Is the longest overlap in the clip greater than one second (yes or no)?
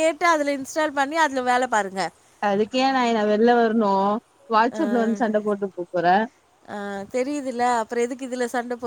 no